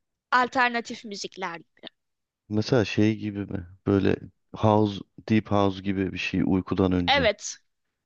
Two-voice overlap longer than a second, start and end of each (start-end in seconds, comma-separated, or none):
none